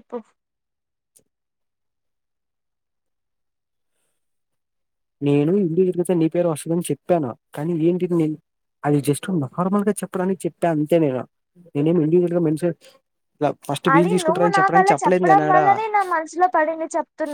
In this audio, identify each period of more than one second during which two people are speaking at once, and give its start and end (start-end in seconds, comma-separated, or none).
13.9-15.6